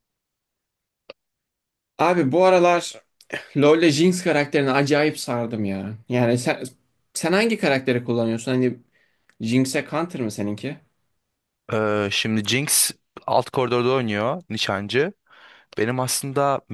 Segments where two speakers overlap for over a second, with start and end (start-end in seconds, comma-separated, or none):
none